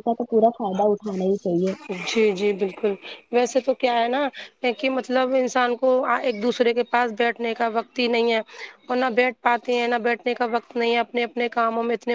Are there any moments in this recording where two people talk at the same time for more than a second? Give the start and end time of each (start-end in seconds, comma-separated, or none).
none